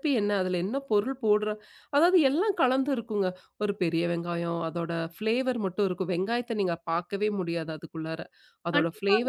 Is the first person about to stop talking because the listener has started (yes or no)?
yes